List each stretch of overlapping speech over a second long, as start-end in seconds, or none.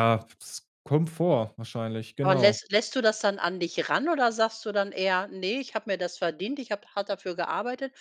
none